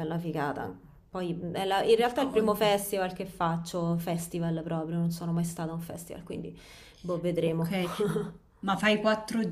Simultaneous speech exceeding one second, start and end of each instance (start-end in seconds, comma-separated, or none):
none